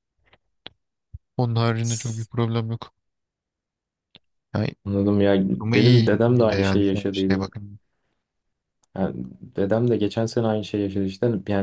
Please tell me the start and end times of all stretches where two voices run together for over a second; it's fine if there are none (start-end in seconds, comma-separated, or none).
5.6-7.5